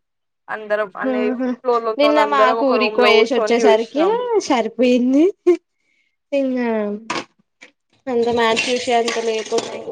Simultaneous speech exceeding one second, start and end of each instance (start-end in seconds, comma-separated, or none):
2.0-4.1